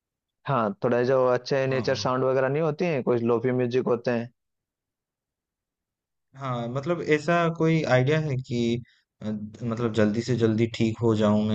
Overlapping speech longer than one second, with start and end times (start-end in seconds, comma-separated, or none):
none